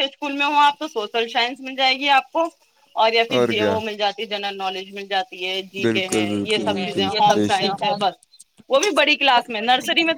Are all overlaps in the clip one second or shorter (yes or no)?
no